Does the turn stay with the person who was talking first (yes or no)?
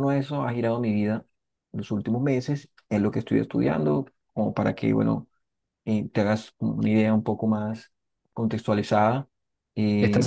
no